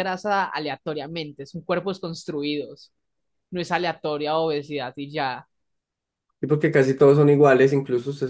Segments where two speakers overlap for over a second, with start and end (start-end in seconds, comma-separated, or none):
none